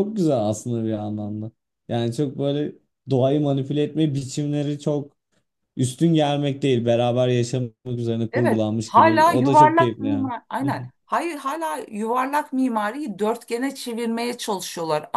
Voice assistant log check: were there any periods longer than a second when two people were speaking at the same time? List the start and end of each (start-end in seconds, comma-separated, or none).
8.3-10.3